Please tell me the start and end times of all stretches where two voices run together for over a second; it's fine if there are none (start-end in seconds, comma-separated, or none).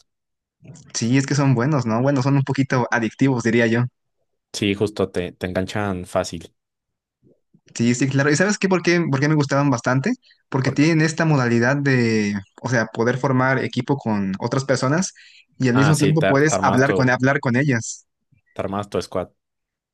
15.7-17.1